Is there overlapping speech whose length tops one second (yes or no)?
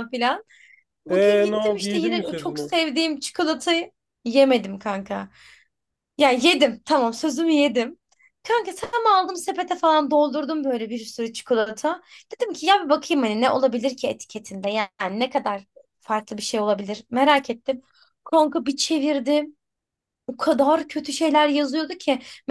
yes